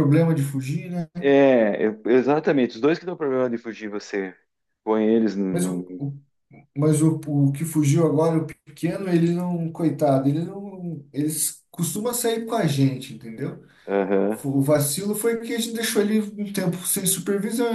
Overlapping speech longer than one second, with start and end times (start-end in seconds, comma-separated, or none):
none